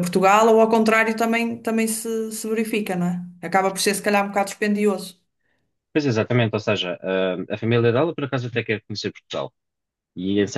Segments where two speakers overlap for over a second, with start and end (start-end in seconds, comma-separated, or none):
none